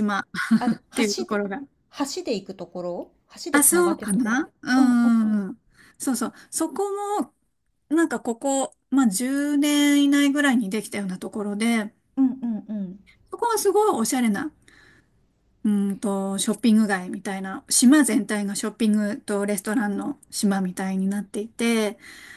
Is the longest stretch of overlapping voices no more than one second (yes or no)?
no